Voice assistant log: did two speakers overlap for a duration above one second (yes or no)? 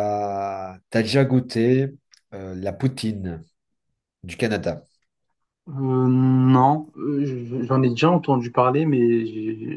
no